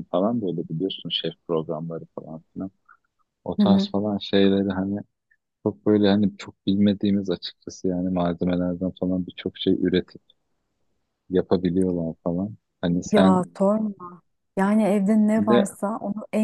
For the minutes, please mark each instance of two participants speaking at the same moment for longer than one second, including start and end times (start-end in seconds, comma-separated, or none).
none